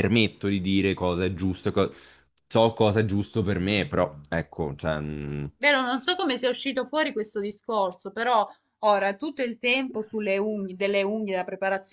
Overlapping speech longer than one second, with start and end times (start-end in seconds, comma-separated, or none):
none